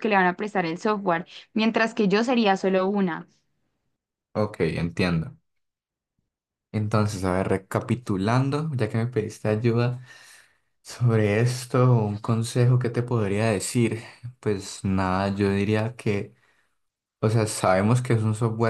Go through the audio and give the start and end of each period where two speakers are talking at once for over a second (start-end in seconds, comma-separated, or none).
none